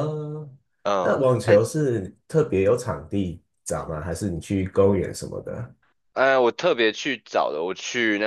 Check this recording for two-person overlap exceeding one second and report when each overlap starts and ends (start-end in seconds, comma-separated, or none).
none